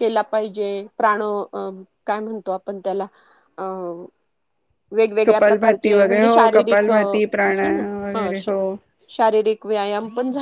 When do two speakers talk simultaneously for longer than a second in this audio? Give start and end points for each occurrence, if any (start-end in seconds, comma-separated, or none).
5.2-8.3